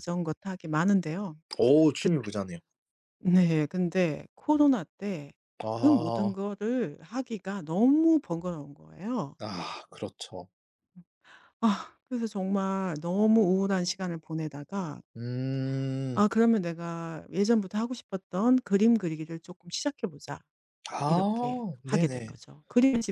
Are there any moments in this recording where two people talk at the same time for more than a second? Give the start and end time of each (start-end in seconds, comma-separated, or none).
21.1-22.4